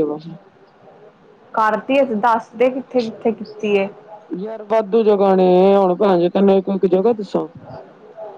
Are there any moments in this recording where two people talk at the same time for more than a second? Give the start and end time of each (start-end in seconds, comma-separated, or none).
none